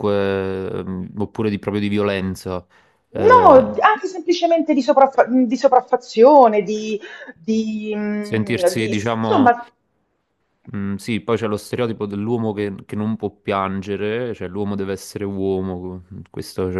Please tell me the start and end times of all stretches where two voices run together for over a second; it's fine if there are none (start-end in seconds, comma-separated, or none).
8.2-9.5